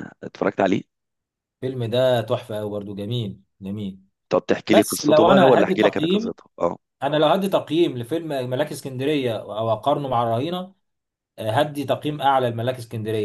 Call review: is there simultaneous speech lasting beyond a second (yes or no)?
yes